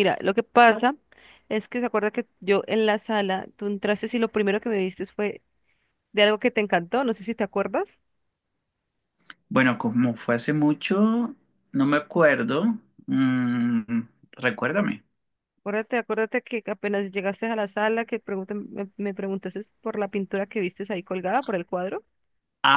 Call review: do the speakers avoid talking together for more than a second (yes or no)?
yes